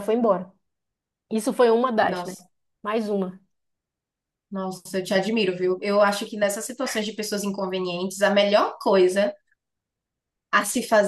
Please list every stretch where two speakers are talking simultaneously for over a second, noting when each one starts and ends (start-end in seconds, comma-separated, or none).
none